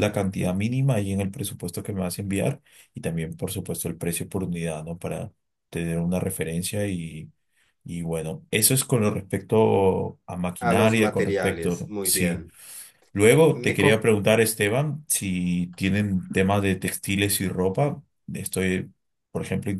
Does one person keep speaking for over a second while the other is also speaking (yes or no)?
yes